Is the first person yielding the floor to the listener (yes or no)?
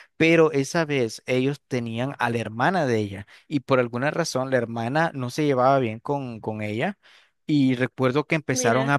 no